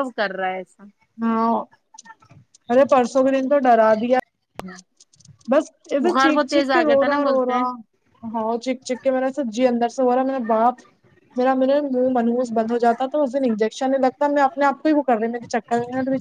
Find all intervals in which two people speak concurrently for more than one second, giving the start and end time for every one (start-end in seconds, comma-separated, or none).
6.1-7.6